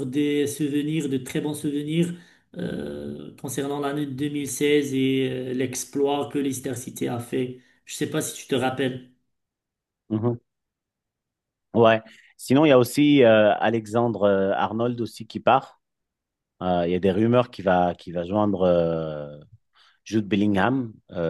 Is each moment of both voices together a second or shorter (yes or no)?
yes